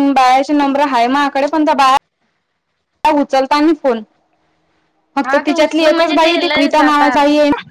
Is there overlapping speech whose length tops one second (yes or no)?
yes